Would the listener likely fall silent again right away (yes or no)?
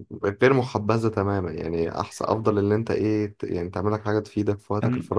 yes